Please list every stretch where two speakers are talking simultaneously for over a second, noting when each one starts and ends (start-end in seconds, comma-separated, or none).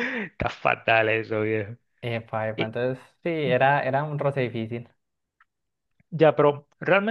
none